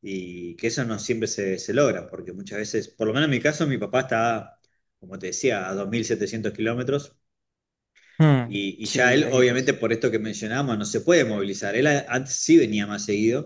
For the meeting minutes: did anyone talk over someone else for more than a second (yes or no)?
yes